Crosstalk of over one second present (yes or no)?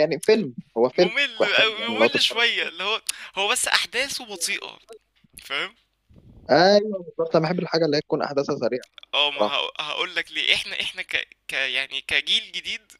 yes